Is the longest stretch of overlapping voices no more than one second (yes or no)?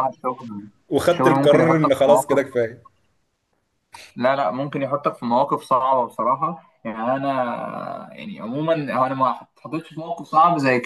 no